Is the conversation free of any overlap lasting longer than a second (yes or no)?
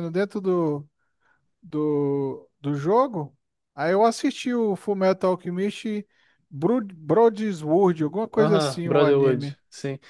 no